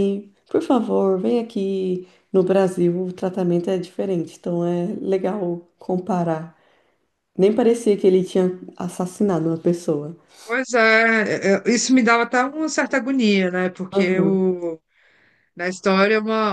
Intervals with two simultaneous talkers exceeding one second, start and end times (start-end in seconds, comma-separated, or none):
none